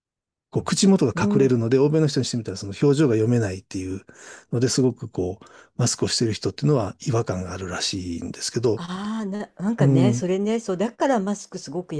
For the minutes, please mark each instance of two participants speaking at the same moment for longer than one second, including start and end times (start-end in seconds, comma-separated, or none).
none